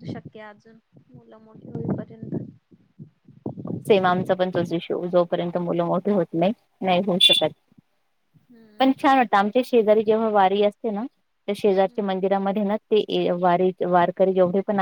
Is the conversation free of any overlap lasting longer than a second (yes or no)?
yes